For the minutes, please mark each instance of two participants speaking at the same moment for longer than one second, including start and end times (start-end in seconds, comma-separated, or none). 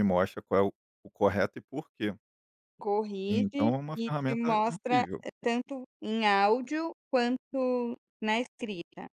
3.3-5.2